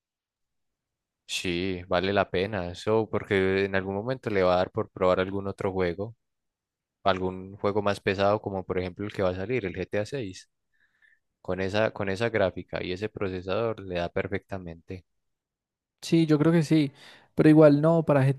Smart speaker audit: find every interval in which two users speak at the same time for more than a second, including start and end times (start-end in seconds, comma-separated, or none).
none